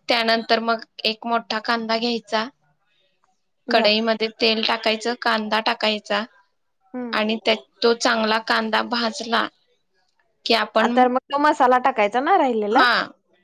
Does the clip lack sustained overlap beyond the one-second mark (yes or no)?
yes